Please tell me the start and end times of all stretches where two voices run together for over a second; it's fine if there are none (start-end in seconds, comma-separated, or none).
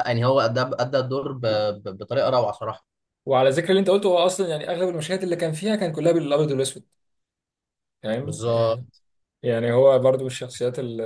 none